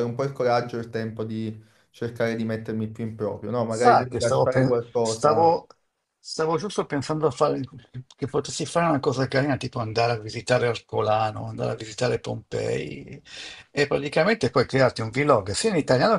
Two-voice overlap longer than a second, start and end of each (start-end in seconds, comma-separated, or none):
3.7-5.5